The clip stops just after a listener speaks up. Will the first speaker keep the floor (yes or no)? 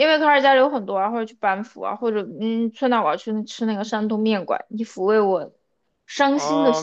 no